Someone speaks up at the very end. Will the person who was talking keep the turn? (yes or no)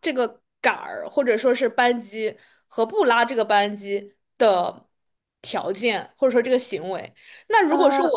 yes